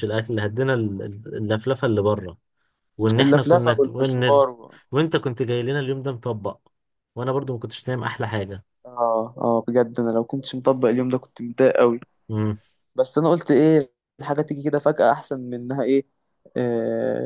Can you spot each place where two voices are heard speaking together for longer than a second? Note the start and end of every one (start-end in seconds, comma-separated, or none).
3.2-4.4